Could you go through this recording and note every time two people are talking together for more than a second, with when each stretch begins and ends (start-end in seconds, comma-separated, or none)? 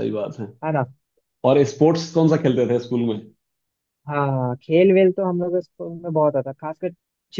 none